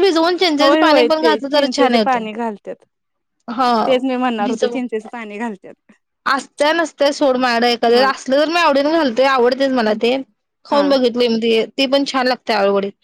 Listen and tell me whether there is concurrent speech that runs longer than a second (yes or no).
yes